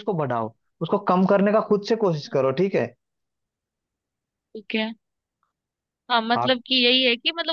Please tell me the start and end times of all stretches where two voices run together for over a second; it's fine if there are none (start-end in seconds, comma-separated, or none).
none